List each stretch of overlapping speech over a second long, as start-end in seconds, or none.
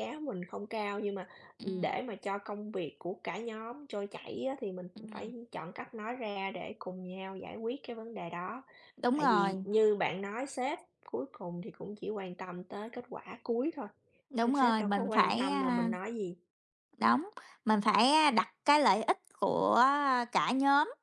14.4-15.9